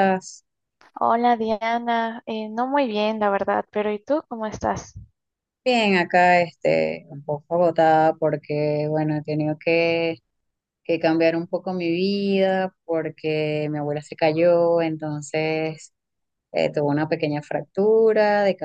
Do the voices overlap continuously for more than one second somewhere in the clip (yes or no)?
no